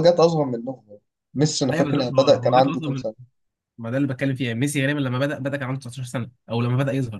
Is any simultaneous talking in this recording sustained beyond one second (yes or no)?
yes